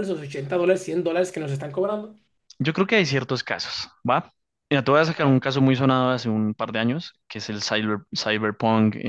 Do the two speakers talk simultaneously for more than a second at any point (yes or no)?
no